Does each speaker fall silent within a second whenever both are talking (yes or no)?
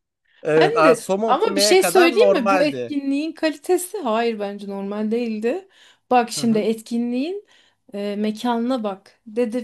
no